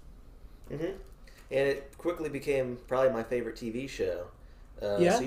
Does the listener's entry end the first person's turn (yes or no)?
no